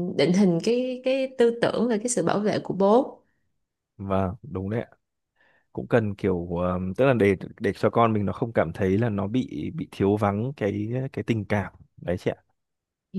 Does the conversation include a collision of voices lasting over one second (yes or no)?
no